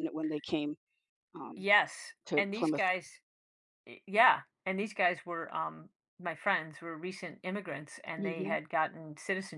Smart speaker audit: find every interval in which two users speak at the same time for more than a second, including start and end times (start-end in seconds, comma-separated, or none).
none